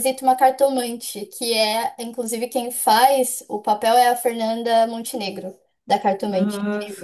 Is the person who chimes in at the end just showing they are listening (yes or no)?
no